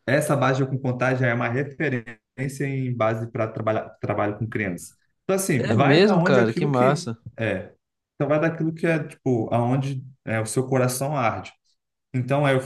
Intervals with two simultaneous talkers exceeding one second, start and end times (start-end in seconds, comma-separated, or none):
5.6-7.2